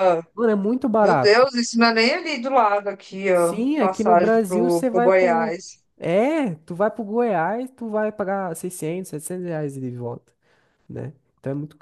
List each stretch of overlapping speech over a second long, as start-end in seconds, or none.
3.3-5.5